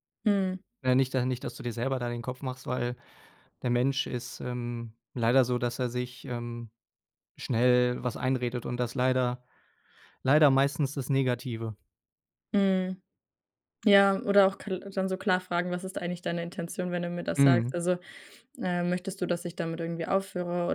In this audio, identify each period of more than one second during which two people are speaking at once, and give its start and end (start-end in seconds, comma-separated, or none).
none